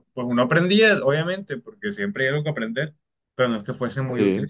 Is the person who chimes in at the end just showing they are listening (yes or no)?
yes